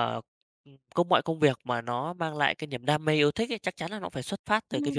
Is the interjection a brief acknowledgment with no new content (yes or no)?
yes